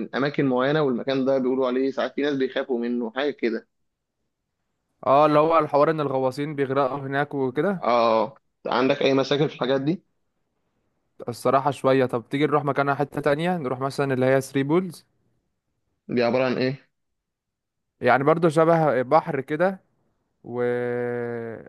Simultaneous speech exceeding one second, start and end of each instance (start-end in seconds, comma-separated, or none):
none